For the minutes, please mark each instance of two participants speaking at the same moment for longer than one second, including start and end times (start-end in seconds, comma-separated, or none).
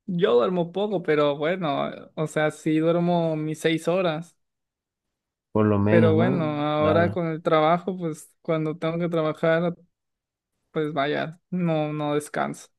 5.8-7.2